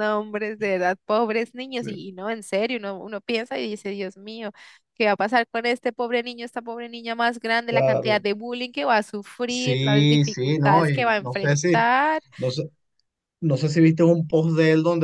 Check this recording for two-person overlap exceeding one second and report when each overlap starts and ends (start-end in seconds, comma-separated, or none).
9.4-11.9